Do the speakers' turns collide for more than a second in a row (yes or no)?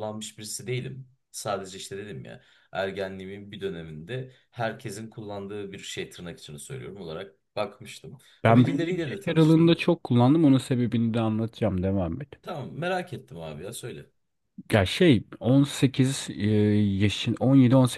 yes